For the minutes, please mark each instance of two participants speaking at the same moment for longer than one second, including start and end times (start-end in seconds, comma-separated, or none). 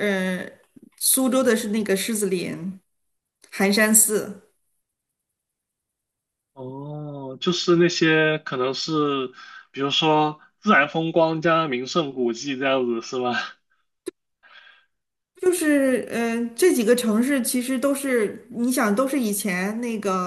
none